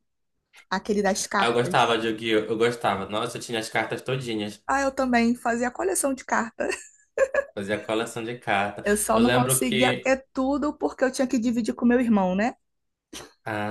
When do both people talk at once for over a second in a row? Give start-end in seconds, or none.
8.8-10.2